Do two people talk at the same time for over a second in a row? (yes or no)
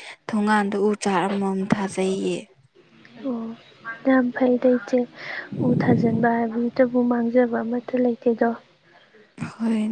no